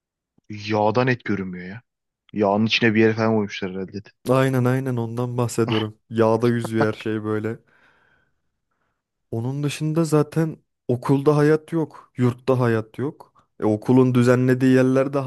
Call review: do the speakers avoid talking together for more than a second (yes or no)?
yes